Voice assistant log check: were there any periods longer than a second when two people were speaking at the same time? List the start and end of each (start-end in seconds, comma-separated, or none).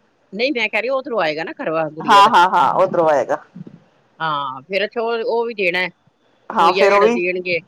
none